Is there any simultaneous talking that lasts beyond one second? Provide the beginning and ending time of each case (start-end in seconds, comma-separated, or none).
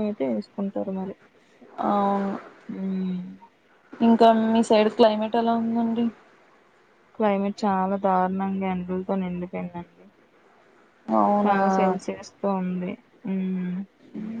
none